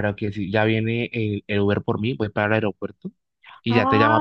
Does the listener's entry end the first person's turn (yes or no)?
yes